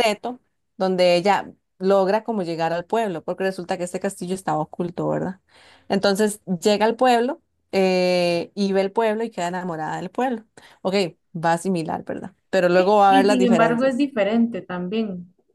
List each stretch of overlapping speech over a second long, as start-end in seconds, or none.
12.7-14.1